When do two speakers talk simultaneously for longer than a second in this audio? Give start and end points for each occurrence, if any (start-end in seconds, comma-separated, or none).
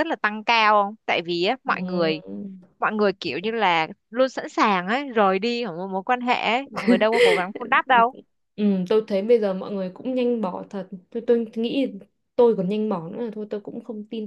none